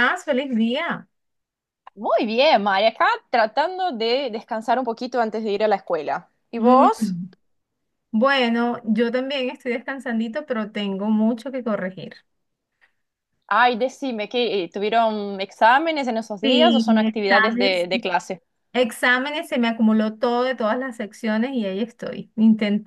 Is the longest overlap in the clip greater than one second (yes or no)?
yes